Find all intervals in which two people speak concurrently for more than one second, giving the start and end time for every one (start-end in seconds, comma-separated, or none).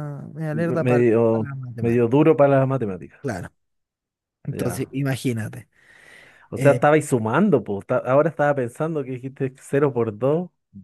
0.5-2.2